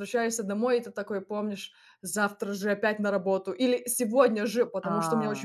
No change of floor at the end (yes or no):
yes